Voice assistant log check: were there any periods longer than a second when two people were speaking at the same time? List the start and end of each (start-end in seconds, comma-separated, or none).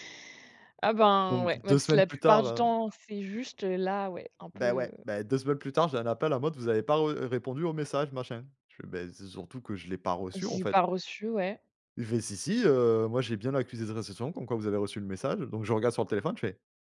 1.3-2.6